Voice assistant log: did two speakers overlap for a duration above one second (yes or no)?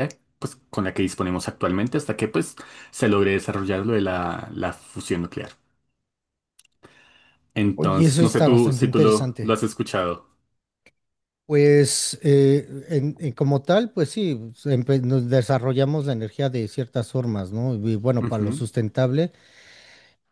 yes